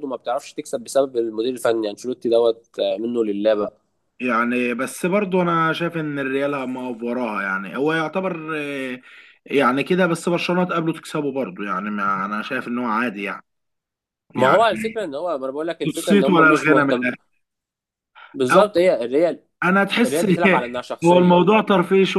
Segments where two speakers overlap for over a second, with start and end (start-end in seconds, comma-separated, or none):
15.8-17.1